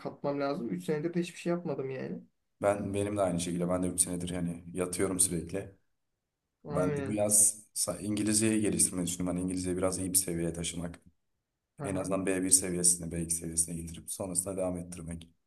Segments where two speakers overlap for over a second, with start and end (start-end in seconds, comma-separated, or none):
none